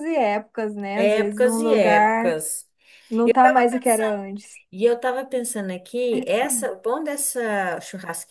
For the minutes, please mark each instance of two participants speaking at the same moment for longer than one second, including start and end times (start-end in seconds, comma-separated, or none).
0.9-2.3